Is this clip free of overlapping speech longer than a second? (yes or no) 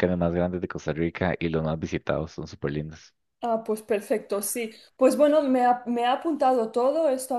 yes